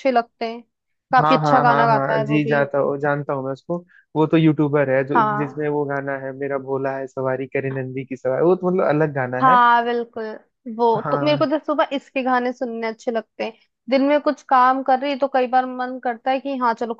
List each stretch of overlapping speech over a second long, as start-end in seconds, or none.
1.2-2.6